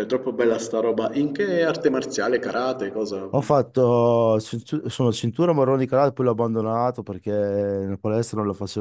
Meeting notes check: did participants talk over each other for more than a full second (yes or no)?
no